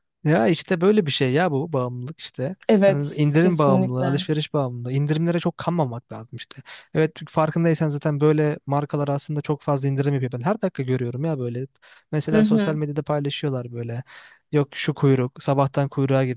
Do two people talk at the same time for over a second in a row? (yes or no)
yes